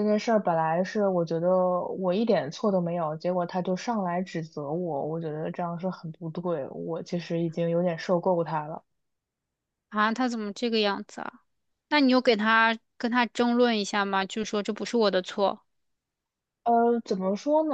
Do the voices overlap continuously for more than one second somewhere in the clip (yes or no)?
no